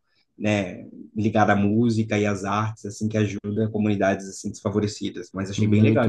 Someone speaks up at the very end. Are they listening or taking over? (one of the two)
taking over